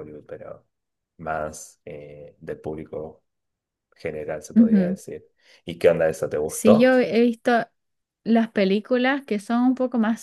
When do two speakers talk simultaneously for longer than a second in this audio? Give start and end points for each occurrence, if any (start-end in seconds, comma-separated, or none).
none